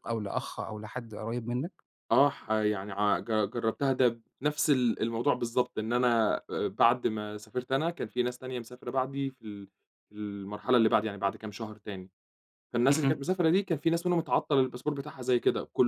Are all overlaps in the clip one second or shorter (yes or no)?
yes